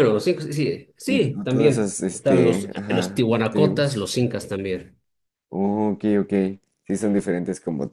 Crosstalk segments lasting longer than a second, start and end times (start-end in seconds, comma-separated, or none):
1.1-4.1